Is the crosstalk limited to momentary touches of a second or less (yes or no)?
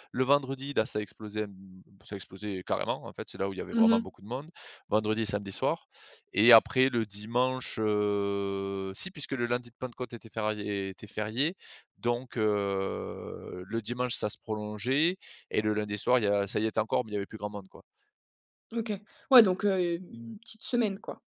yes